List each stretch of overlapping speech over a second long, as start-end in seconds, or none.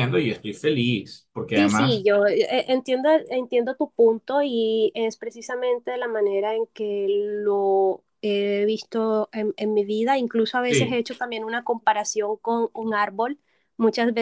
none